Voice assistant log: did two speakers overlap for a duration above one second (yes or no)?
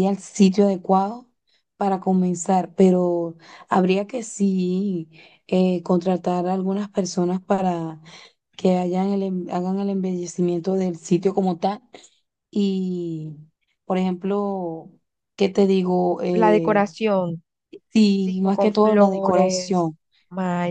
yes